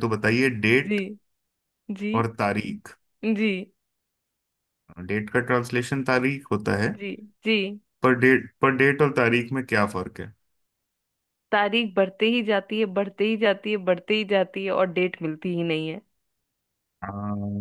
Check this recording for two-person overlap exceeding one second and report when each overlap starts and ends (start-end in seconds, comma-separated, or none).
none